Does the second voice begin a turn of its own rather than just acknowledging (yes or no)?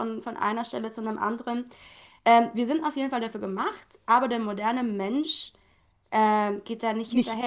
no